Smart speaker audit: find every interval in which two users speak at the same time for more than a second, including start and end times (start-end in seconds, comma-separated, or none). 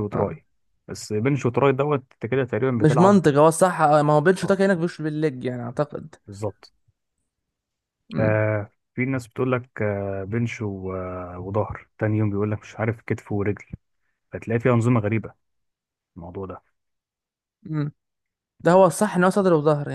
none